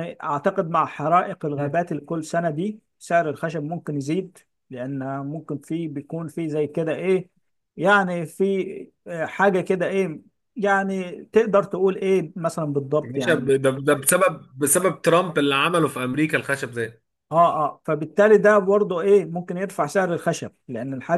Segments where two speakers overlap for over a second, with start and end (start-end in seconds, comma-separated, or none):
none